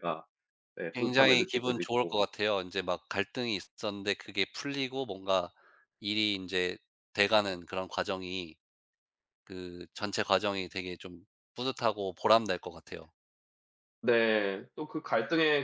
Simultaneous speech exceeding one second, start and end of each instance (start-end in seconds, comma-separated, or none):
0.9-2.2